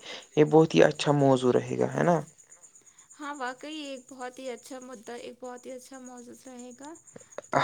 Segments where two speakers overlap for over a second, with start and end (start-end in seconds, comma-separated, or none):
none